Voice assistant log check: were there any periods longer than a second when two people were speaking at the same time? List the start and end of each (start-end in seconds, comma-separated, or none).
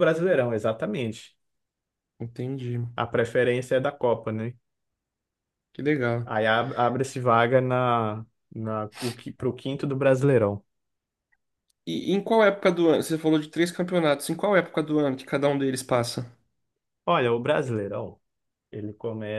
none